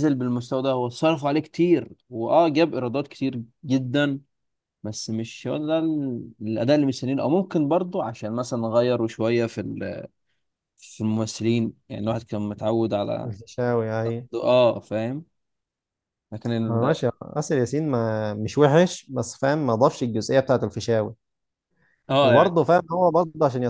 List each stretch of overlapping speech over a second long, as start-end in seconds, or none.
none